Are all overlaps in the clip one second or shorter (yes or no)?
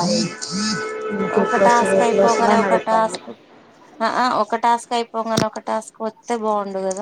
no